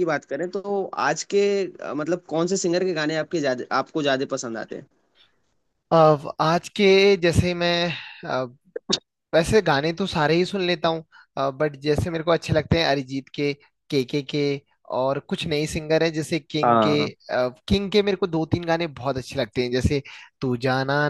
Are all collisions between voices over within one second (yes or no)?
yes